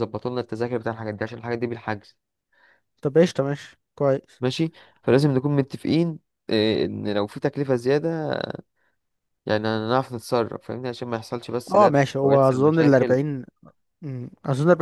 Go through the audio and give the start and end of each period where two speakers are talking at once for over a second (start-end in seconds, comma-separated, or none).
11.7-13.2